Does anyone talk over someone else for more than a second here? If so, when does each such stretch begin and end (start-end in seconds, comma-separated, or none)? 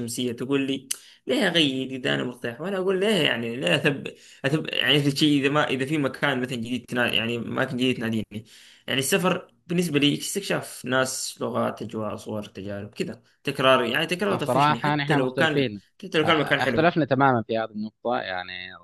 14.4-15.8